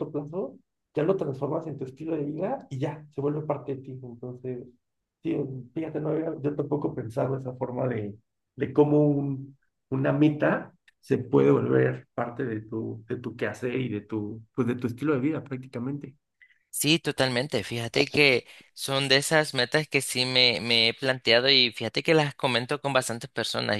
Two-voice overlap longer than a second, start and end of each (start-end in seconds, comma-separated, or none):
none